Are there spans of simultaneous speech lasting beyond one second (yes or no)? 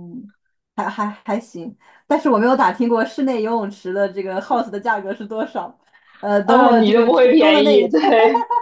yes